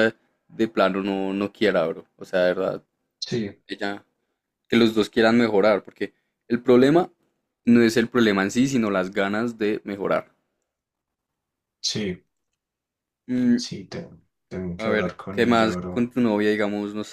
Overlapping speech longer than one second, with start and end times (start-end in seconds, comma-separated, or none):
14.8-16.1